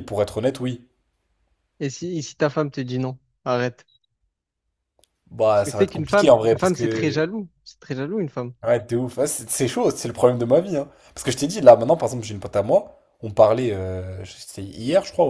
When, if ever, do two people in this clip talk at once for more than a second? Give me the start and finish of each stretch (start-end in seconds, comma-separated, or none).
5.5-7.3